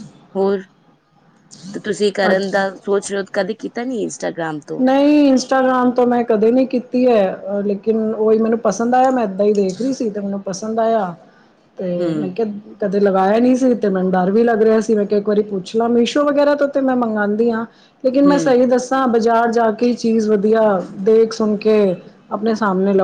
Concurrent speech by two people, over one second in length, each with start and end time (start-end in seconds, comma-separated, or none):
none